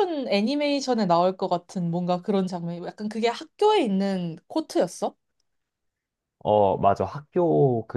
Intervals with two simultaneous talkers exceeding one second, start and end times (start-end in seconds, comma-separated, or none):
none